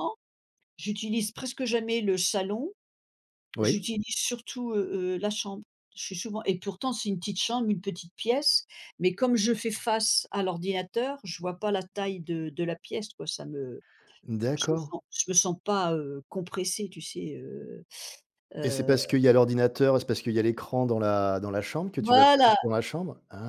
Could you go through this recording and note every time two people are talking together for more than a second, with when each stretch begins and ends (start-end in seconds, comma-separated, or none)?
none